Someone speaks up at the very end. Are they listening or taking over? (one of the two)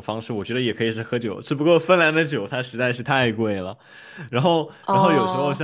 listening